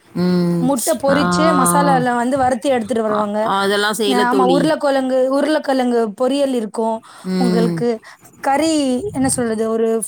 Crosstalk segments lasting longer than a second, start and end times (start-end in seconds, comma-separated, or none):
none